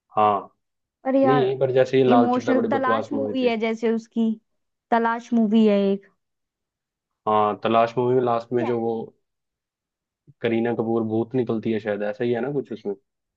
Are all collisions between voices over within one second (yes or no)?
no